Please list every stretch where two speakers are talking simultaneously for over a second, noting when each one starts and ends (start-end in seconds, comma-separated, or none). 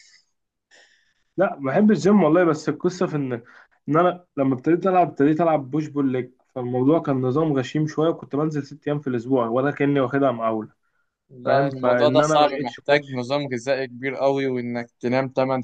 11.4-13.1